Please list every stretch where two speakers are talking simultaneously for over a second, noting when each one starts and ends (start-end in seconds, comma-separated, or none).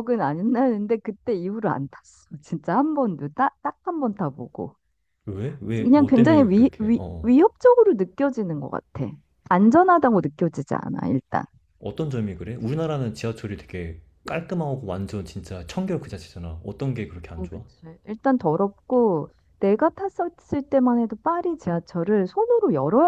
5.8-7.4